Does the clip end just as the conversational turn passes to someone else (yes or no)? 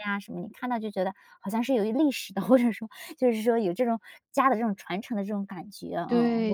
yes